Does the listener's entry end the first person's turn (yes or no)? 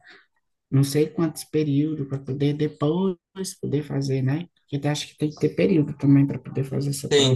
yes